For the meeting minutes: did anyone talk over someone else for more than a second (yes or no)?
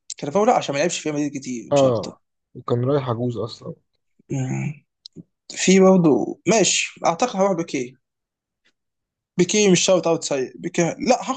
no